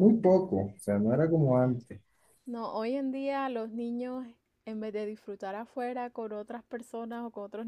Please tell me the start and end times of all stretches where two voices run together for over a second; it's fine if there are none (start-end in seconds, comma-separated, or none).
none